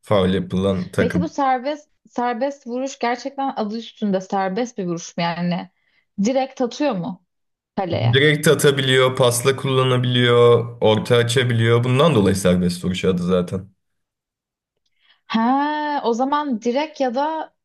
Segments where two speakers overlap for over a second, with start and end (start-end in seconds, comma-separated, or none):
none